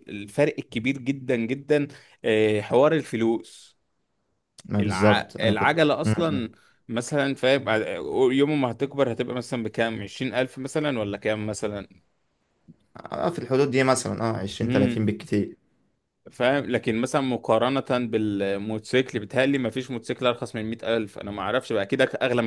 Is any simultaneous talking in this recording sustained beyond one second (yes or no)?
yes